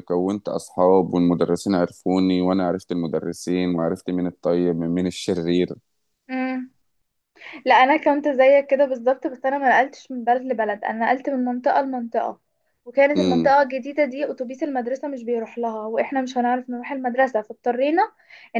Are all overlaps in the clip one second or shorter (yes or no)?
yes